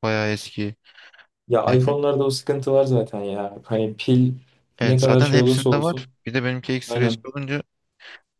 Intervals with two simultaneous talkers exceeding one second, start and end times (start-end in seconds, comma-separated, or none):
4.8-6.1